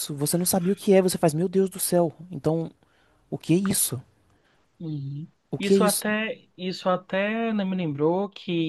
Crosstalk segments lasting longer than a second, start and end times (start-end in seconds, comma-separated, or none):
none